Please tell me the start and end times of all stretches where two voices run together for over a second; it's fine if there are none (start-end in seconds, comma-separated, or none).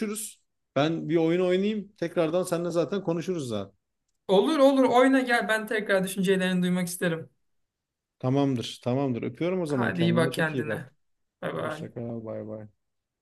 9.7-10.9